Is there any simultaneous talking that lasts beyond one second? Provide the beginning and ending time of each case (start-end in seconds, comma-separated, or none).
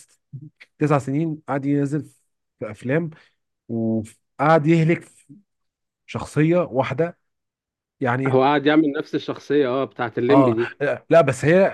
none